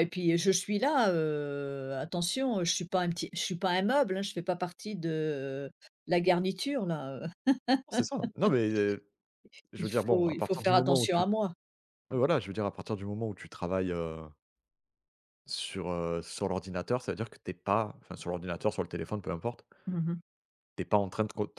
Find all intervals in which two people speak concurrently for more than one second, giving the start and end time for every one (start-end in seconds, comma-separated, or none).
9.8-11.2